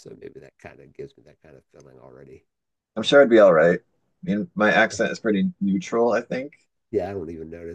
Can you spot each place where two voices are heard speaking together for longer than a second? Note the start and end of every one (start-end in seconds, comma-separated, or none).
none